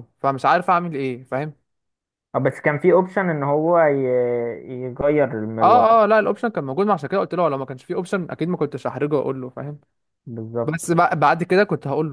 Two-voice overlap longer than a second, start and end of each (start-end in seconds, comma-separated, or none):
none